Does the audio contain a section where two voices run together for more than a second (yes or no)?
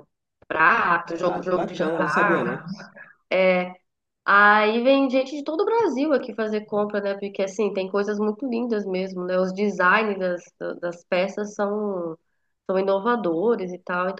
yes